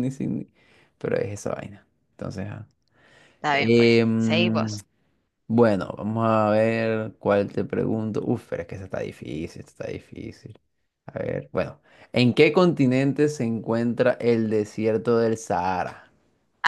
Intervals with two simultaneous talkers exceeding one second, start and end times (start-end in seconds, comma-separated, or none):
3.5-4.7